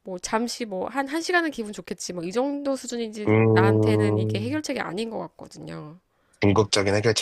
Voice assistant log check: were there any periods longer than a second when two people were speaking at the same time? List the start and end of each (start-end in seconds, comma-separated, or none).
3.3-4.6